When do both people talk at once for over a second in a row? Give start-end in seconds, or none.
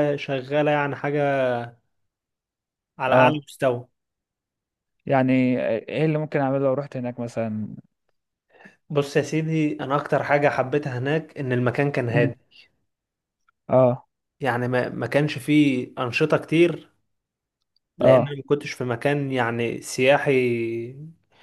none